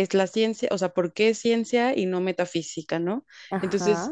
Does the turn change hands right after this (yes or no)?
no